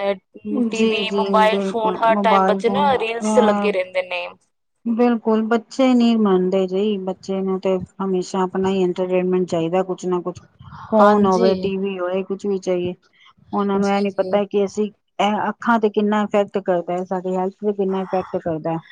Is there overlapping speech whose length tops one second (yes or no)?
yes